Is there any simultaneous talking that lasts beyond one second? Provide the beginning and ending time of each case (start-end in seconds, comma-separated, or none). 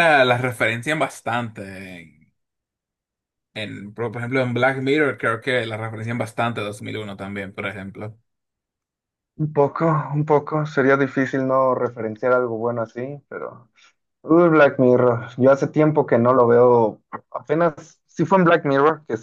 none